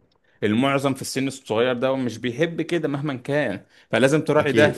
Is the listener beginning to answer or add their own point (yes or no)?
no